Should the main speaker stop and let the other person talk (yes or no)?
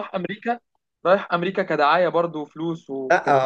yes